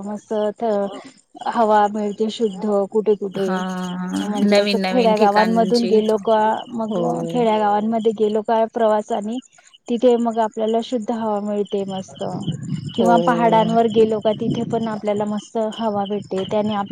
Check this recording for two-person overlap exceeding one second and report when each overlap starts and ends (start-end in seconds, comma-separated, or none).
4.5-5.9